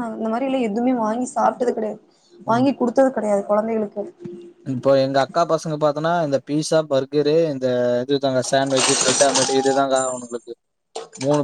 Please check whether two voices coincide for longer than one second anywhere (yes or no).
no